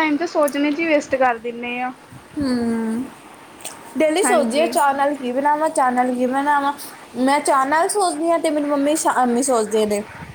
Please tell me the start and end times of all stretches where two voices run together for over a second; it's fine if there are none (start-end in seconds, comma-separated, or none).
none